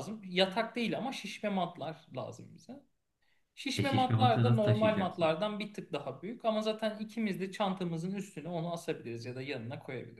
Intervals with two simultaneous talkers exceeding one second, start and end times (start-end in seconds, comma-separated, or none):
3.8-5.3